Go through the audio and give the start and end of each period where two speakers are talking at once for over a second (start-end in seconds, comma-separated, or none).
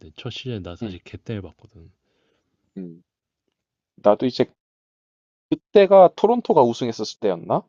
none